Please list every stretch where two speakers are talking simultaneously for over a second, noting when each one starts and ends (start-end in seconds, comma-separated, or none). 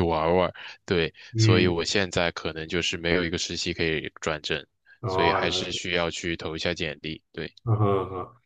none